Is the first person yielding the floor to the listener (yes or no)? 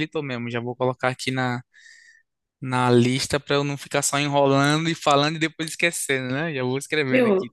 yes